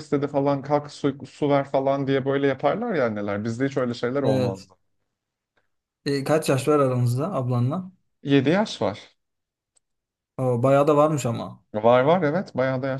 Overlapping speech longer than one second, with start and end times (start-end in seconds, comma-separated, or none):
none